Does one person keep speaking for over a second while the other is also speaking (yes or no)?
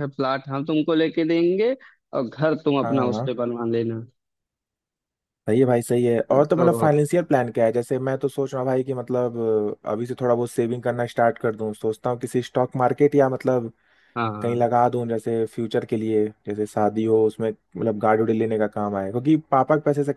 no